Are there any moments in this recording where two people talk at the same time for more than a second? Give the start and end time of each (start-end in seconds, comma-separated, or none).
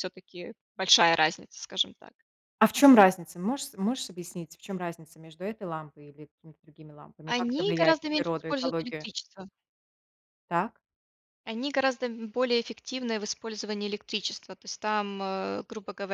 7.3-9.1